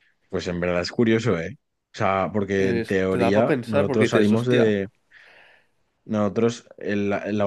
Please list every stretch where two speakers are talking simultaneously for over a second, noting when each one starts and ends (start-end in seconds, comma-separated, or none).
2.6-4.7